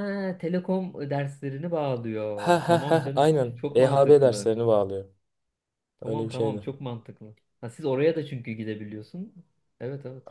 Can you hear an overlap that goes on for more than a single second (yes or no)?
yes